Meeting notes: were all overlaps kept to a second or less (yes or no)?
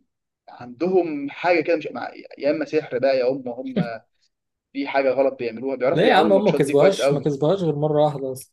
no